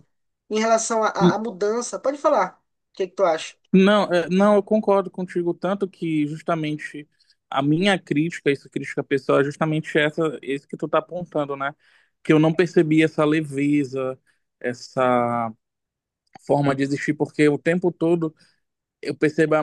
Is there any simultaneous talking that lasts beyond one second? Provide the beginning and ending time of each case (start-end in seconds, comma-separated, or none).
none